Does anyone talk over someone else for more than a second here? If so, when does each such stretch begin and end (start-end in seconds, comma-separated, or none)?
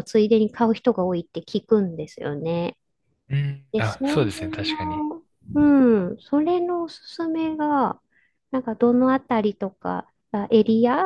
3.7-5.0